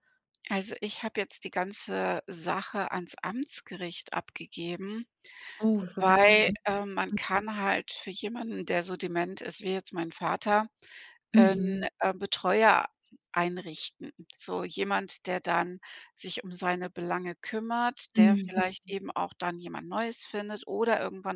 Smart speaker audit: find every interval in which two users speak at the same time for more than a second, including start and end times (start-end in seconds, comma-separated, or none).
none